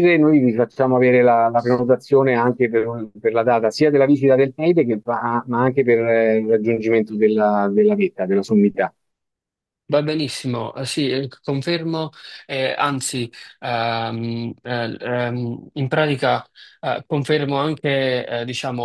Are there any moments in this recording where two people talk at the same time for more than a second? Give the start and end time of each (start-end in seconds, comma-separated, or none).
none